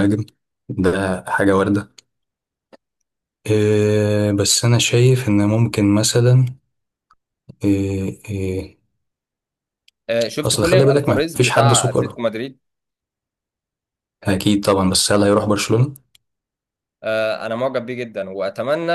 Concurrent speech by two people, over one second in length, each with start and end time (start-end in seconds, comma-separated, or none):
10.4-12.2